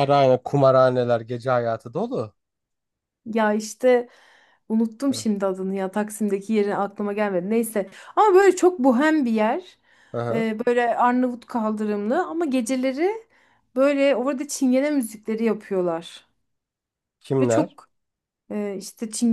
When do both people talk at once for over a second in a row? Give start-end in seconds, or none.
none